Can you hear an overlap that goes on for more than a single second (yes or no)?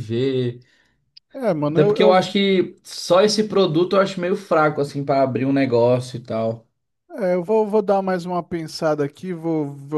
no